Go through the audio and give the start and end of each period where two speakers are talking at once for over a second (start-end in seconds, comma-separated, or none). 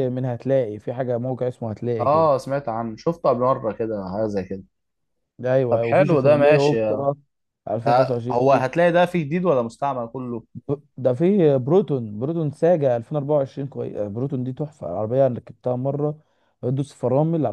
5.7-7.1